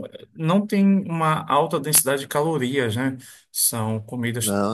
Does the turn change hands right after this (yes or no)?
no